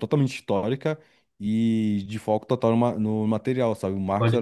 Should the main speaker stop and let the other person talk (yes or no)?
no